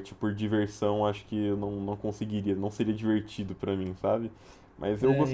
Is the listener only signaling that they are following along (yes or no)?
yes